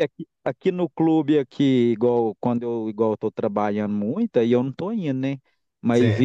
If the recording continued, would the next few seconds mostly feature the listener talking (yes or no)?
no